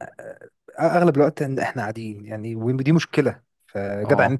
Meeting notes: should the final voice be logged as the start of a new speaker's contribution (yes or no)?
no